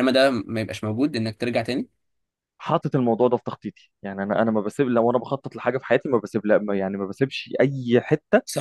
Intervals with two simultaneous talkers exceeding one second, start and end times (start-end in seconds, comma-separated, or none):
none